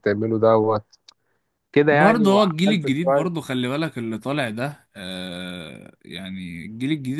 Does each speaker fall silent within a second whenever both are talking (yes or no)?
no